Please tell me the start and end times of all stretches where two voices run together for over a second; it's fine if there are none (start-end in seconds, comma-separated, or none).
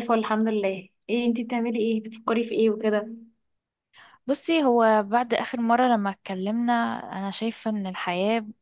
none